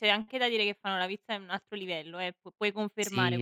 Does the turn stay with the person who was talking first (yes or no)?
no